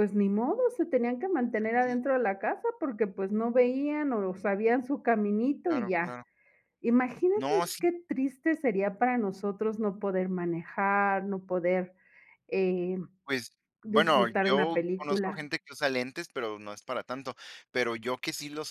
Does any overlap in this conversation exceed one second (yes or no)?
yes